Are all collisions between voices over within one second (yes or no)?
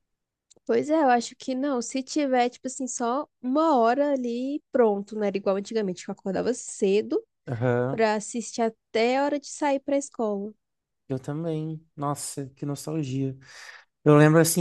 yes